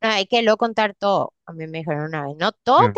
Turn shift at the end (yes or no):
no